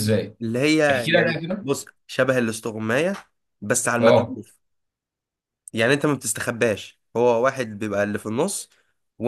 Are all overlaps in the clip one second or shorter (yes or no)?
yes